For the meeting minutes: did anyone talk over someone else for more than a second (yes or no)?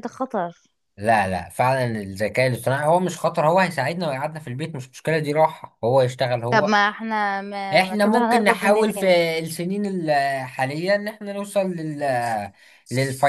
yes